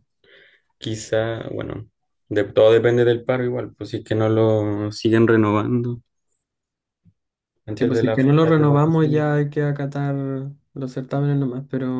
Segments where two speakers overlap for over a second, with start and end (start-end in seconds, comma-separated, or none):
7.8-9.3